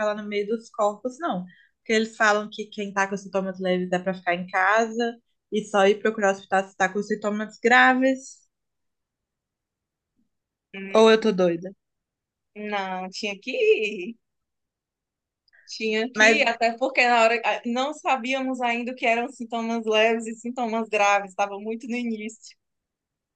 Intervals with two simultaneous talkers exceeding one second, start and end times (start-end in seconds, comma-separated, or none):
none